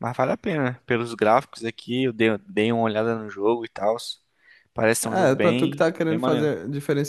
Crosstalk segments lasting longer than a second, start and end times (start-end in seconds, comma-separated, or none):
5.0-6.5